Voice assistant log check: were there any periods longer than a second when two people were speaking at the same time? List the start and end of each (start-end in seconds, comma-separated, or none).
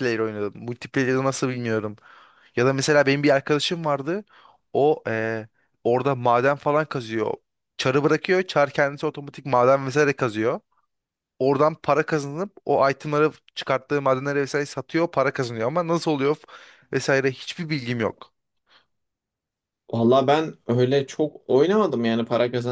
none